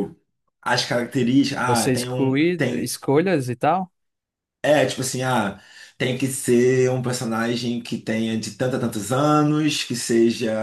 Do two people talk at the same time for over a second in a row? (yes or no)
yes